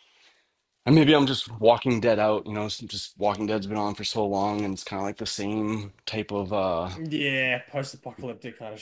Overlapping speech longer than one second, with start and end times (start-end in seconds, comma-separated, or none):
none